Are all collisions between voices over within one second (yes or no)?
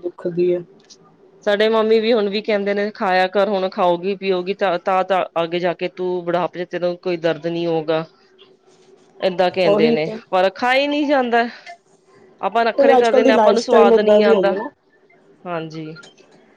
no